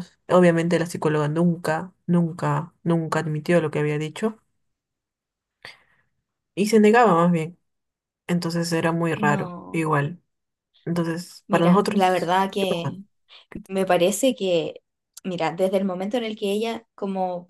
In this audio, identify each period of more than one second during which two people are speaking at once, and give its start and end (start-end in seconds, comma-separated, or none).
11.5-13.0